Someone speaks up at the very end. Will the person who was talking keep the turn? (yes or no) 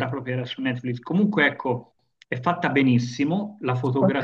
yes